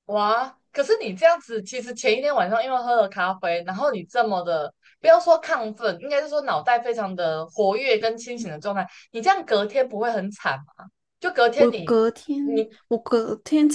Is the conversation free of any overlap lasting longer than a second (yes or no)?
yes